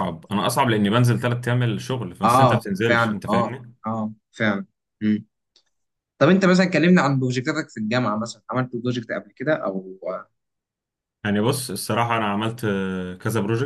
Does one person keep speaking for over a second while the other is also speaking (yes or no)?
yes